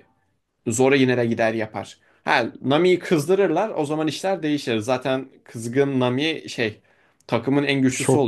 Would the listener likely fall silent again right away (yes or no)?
no